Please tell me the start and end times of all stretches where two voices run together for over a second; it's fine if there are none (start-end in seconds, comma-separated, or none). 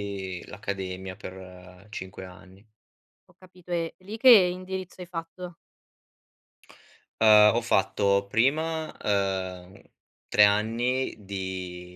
none